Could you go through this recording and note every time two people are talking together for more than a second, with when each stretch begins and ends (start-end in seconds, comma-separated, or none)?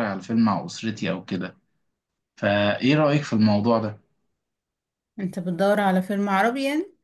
none